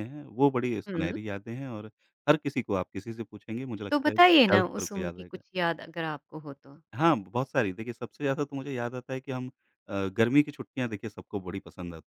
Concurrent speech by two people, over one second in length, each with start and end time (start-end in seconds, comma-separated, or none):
3.9-5.4